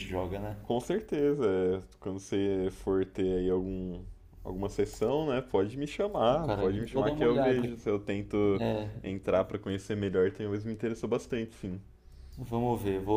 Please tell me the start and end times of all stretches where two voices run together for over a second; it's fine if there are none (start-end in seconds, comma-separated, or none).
6.3-7.6